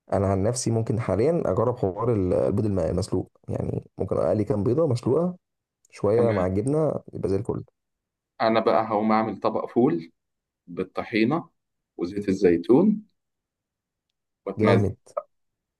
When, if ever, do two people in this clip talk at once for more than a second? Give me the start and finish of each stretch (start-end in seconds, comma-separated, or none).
none